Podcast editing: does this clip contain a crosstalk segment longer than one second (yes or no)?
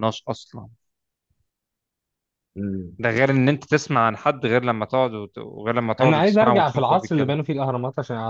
yes